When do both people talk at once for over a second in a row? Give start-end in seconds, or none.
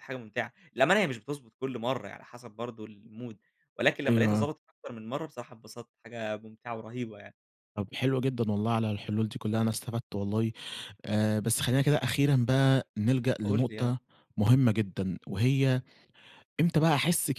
none